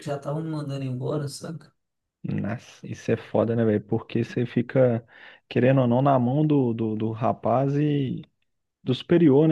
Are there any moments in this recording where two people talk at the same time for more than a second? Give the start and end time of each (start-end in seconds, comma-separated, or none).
none